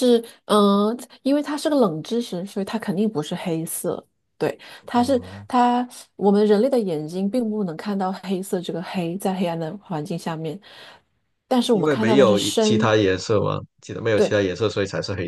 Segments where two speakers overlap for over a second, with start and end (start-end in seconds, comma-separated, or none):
11.7-12.9